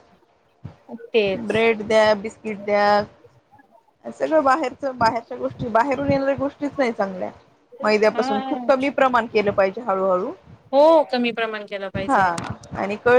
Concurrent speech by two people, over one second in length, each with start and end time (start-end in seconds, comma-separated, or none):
none